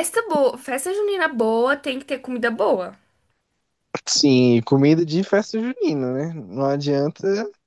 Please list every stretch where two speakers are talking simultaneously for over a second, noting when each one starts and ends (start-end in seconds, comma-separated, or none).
none